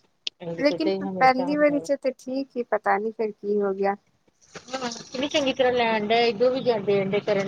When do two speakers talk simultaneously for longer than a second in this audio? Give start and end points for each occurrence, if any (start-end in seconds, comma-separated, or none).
0.6-1.9